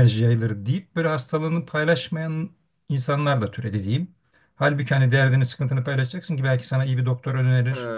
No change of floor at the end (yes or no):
yes